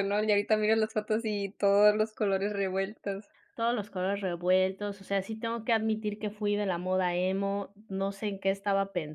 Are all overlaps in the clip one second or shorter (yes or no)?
yes